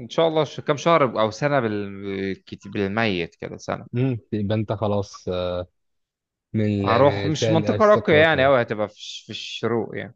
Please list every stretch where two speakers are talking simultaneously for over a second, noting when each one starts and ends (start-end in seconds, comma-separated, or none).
6.8-8.5